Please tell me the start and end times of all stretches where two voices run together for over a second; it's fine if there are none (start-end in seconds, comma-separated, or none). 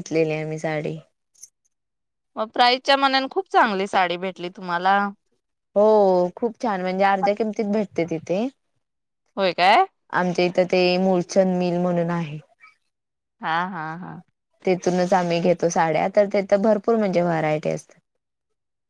none